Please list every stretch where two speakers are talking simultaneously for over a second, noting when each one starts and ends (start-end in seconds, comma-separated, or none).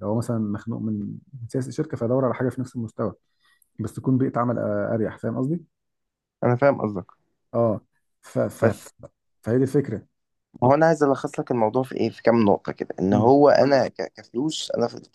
none